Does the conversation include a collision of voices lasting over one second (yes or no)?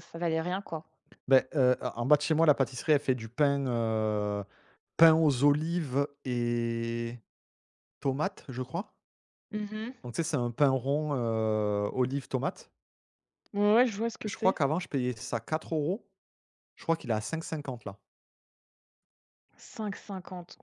no